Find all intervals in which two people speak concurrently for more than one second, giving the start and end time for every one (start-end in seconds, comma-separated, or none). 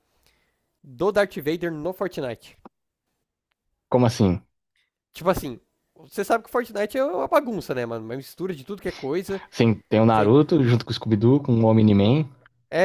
none